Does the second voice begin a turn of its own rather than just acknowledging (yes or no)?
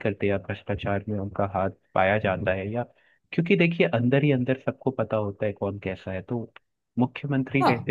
no